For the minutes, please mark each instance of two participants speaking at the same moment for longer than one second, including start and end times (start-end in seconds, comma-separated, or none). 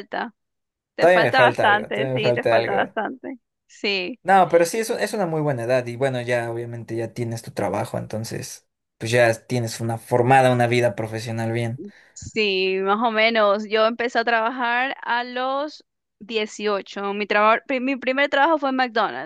1.0-2.9